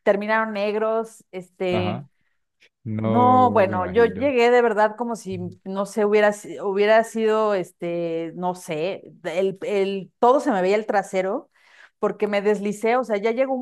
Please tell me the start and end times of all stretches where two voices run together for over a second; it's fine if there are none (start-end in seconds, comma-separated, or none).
3.0-4.3